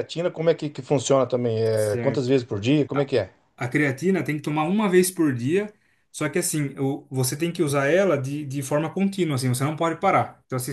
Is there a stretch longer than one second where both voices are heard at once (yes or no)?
no